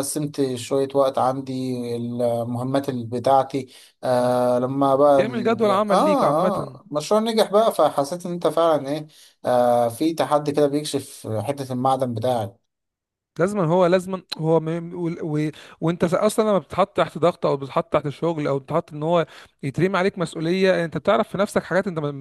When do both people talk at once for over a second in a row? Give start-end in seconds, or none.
5.2-6.8